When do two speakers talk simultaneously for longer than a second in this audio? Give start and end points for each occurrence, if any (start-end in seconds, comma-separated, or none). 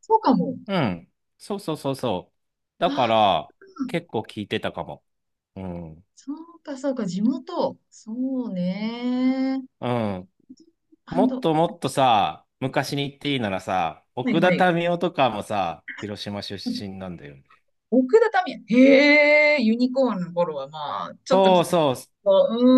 none